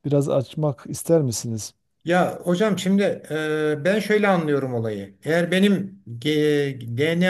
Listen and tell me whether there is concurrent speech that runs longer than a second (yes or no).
no